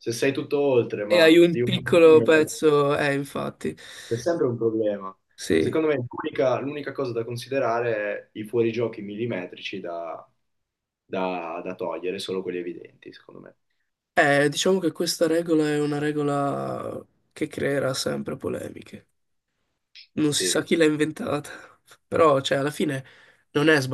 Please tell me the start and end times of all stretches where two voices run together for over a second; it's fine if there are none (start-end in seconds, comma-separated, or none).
1.1-2.5